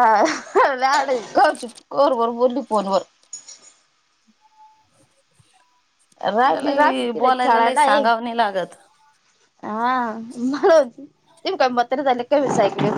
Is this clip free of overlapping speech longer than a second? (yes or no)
no